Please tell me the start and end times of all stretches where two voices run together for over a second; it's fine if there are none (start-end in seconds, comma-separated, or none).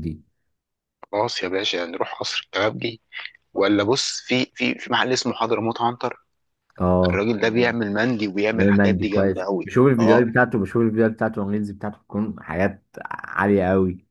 8.5-10.3